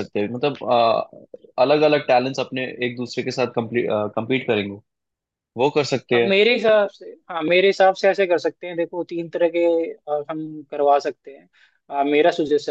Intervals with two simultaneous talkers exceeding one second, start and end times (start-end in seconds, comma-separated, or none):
none